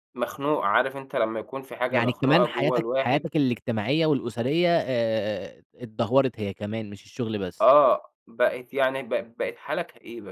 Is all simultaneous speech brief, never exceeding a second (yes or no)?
no